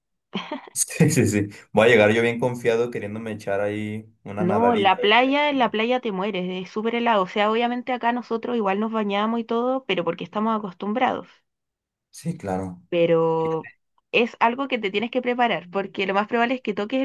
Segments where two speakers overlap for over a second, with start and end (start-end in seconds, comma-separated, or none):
4.4-5.8